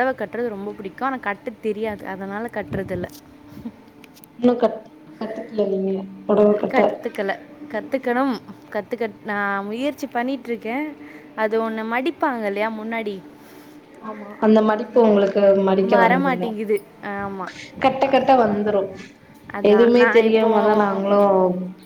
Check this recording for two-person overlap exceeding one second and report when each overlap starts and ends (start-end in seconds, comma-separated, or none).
19.7-21.2